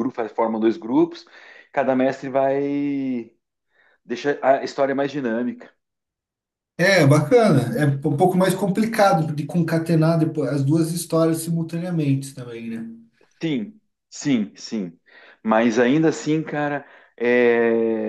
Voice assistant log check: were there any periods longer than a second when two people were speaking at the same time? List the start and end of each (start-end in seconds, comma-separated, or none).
none